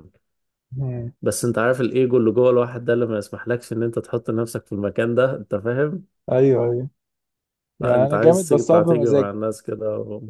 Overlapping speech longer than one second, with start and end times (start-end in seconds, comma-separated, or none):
7.8-9.4